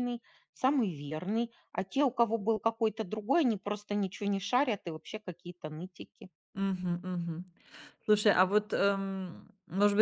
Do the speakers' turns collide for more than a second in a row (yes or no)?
no